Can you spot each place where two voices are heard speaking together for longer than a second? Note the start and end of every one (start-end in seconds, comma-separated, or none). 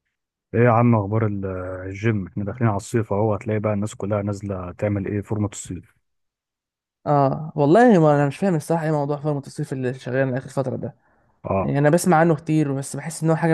none